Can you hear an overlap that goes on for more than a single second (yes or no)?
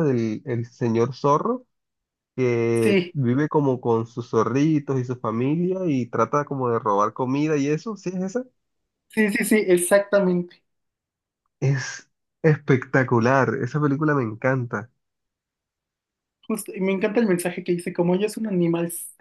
no